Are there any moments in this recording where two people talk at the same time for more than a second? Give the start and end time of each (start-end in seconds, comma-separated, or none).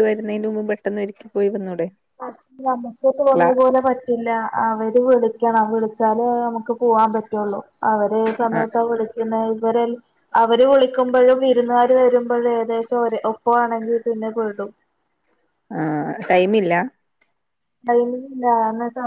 none